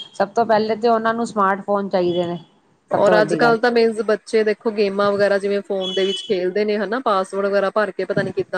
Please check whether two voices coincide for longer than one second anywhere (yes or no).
no